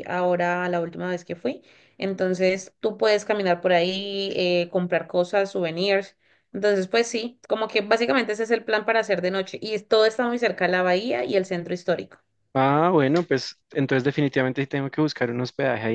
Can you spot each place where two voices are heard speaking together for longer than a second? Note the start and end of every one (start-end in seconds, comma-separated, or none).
none